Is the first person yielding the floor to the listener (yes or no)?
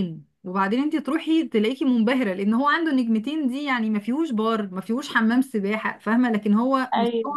no